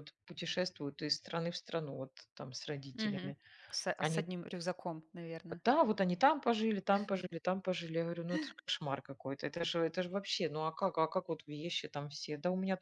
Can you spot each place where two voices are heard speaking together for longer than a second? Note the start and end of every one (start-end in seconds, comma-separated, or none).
none